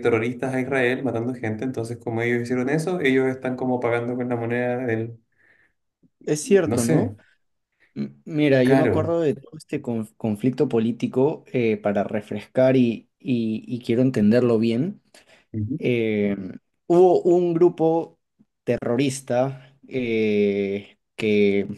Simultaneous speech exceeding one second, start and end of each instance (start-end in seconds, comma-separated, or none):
none